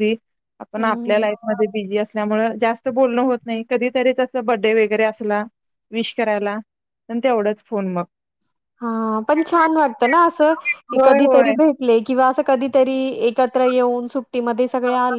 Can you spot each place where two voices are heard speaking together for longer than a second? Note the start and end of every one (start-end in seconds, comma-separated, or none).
none